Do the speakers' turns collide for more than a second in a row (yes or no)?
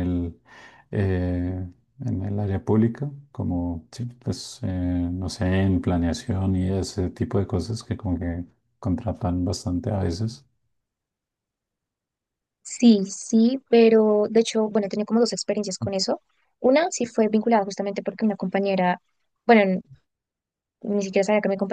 no